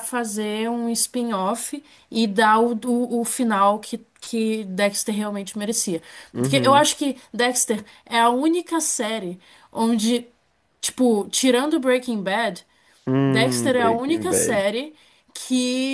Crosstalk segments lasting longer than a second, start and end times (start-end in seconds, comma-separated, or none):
13.2-14.6